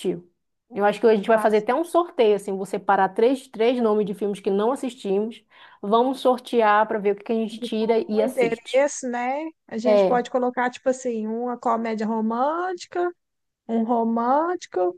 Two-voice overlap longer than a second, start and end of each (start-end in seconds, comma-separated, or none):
7.5-8.9